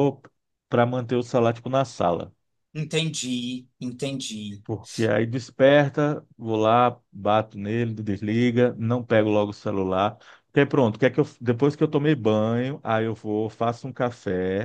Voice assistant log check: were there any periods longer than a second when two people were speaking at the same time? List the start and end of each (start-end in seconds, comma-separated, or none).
none